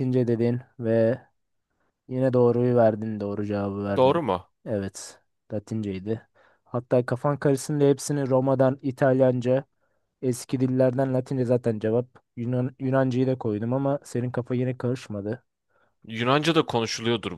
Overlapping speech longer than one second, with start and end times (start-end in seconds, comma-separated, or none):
none